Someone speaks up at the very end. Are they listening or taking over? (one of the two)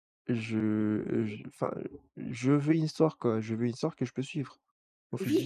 taking over